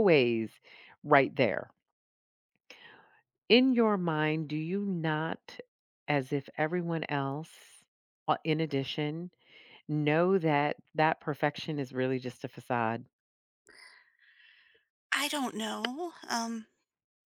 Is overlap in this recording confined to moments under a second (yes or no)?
yes